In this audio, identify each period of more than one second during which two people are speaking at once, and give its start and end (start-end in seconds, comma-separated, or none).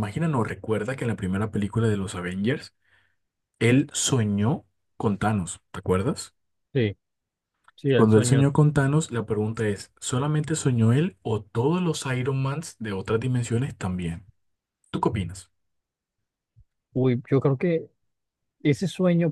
none